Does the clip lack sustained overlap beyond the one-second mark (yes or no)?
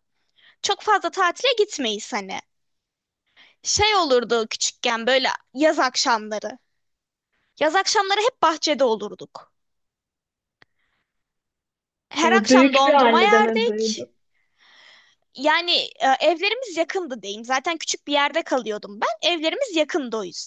no